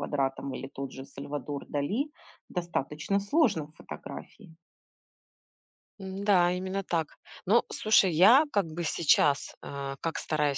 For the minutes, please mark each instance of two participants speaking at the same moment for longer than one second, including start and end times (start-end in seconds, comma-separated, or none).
none